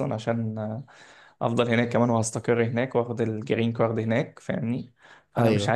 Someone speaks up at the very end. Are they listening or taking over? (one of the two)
listening